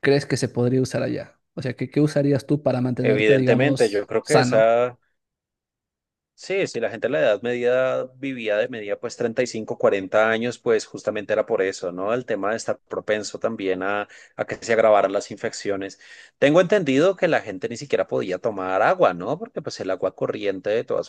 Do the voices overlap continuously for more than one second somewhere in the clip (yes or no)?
yes